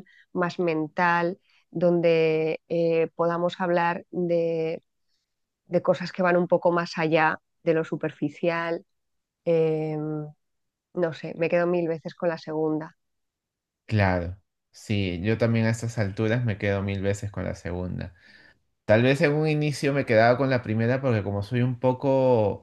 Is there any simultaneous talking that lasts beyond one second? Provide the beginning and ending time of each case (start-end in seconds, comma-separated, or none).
none